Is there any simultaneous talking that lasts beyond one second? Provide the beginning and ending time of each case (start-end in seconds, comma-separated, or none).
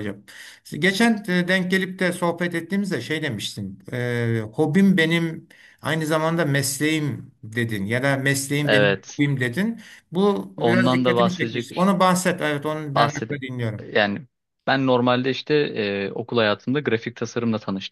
10.6-11.9